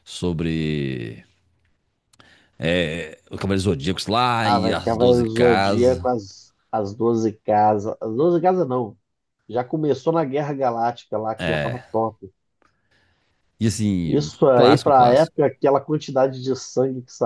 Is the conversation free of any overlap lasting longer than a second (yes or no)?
no